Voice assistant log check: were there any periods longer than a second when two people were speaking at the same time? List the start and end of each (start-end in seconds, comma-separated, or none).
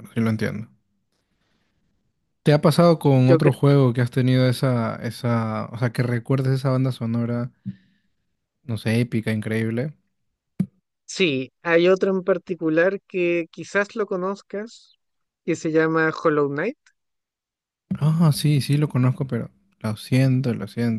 none